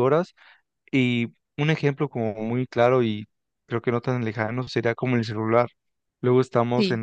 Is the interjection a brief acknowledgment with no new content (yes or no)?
yes